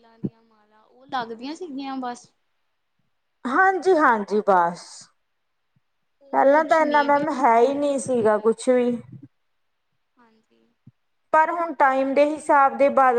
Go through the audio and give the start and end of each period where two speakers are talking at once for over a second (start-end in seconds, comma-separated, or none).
6.3-8.5